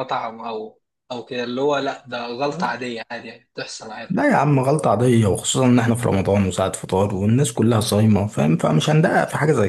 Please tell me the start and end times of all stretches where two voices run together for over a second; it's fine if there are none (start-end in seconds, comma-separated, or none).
none